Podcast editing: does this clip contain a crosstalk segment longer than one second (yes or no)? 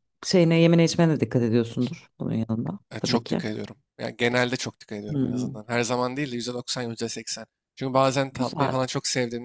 no